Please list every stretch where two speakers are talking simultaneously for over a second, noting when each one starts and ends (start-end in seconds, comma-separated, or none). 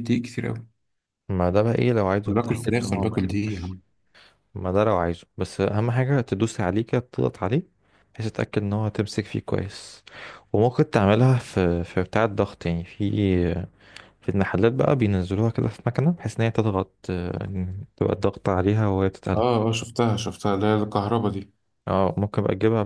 2.2-3.8